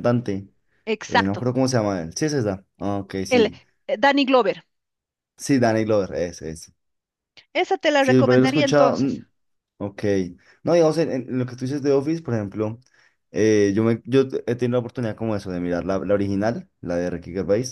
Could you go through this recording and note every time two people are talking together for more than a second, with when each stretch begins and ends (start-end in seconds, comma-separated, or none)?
8.0-9.2